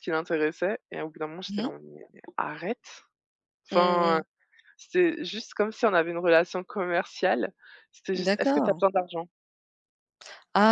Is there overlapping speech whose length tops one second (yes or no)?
no